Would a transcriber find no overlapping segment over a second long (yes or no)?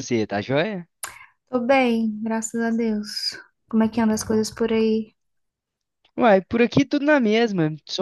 yes